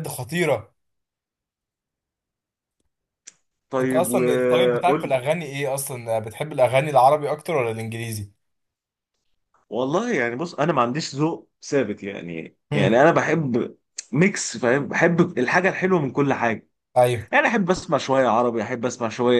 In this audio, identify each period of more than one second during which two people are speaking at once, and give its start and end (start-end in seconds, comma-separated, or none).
3.8-5.2